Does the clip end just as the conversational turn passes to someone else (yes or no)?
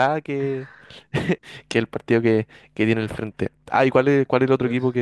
no